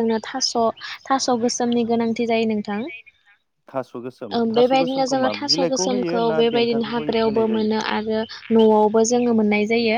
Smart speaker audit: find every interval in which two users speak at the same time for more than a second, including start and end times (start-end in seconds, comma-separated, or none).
4.6-7.7